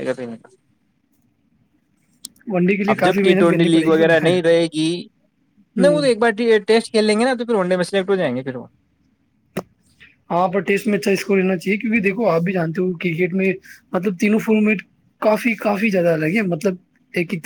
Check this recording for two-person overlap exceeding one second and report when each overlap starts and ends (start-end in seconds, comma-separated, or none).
2.9-4.2